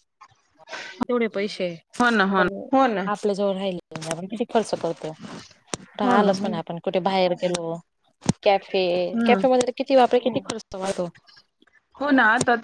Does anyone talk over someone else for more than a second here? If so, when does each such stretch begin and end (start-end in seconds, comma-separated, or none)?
none